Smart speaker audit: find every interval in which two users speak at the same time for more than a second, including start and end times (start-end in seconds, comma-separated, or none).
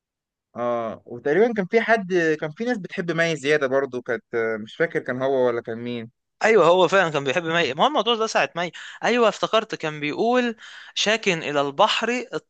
none